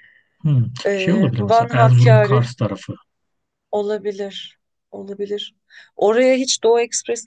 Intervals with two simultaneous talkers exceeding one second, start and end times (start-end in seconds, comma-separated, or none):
0.8-2.5